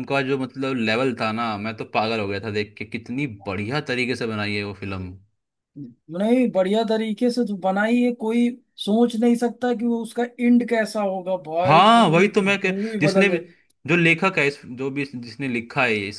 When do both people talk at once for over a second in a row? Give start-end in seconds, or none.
11.6-13.4